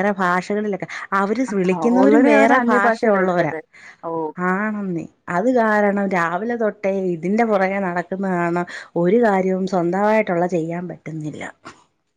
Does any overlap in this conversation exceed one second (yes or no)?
yes